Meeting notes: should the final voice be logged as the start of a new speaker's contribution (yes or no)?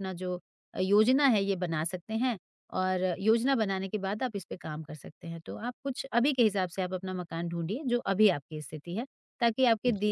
no